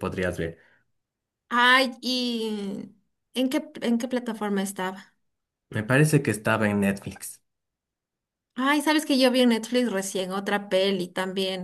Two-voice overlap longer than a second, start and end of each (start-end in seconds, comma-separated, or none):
none